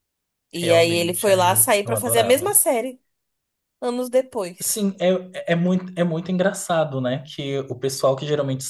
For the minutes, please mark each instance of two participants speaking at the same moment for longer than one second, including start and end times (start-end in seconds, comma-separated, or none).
0.6-2.5